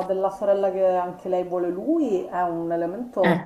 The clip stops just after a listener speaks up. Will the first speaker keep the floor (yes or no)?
yes